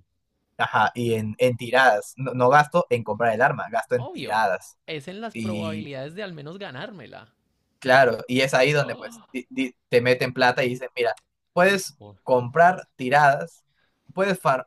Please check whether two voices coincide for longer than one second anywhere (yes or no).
no